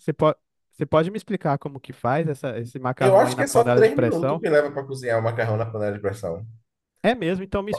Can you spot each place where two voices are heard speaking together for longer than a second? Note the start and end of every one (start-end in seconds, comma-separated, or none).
3.0-4.4